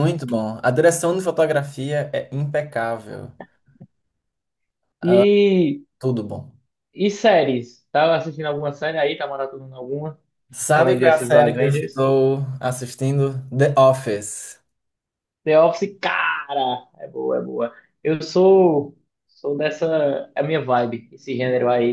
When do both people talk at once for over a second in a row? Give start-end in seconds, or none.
10.7-12.0